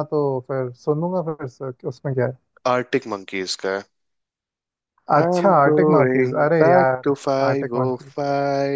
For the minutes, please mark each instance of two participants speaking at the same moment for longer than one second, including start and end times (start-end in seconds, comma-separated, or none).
5.2-8.1